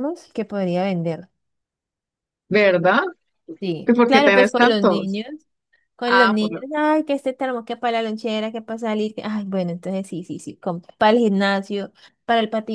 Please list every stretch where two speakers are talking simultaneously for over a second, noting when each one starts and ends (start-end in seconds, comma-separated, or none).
3.9-5.2